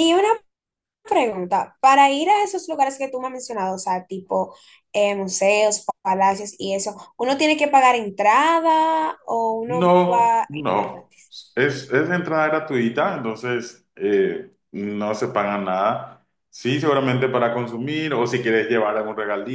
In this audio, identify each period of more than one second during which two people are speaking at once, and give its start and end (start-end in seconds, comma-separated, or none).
9.7-11.1